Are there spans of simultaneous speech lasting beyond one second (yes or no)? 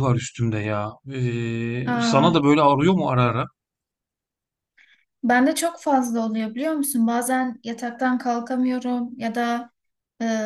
no